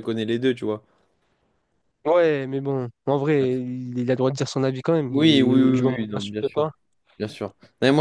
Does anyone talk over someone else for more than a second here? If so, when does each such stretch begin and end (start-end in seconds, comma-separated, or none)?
5.1-6.7